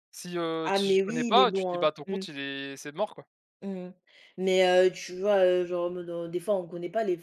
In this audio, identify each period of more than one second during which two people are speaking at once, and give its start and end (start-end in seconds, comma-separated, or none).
0.6-2.2